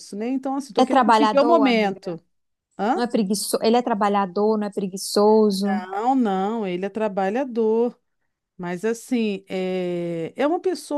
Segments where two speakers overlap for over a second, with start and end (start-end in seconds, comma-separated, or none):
0.8-2.2